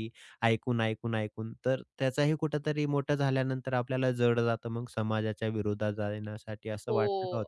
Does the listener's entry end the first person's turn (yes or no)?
yes